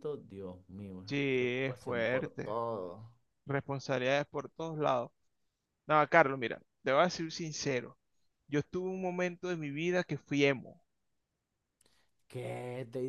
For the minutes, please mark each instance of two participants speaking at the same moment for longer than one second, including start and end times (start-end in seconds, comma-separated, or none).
1.1-2.6